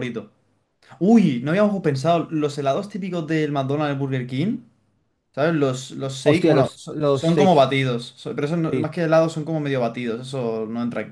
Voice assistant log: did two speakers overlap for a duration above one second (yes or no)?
yes